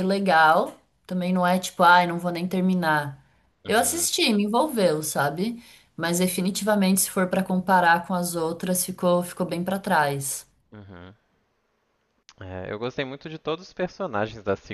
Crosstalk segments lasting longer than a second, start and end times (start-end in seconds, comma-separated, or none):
none